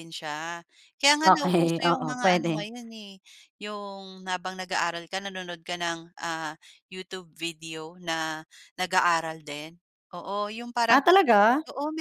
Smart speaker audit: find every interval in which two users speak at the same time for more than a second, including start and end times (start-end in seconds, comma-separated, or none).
1.2-2.7